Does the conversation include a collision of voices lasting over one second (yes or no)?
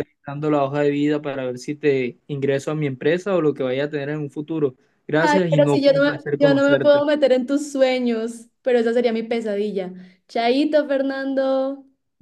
yes